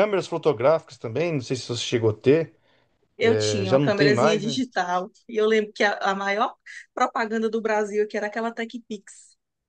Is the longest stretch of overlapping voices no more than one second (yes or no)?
no